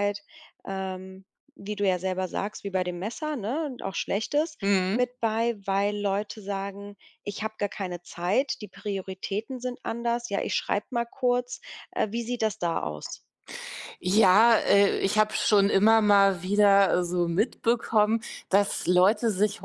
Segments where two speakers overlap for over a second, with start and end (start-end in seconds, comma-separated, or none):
none